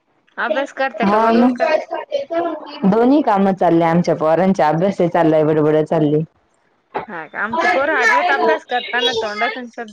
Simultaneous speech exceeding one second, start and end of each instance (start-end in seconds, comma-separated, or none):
none